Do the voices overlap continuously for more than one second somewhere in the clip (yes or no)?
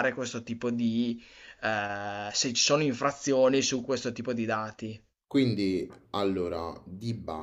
no